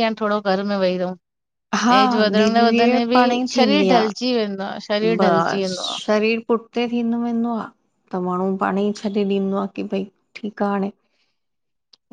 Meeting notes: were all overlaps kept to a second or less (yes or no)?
no